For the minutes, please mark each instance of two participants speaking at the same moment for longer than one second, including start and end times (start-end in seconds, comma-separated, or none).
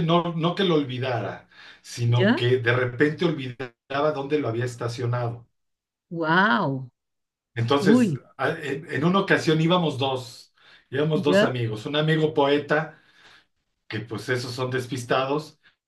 none